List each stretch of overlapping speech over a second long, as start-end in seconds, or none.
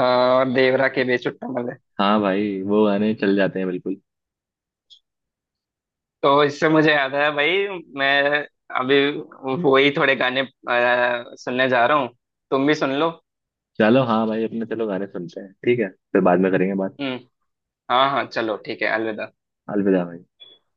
none